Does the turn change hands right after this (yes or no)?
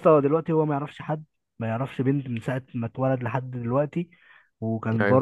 no